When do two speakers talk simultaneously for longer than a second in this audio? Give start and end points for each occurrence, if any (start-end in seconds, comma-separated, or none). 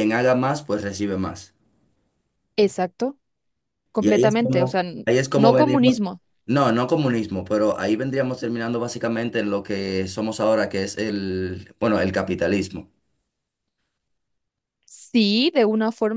4.0-6.0